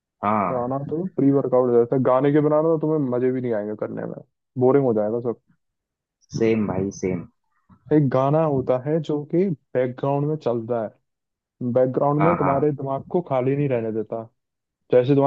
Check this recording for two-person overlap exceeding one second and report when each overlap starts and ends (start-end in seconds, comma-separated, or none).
none